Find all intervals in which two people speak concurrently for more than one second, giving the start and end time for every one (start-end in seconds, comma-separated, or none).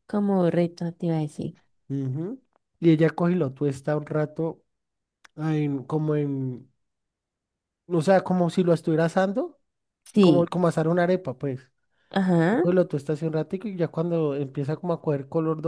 none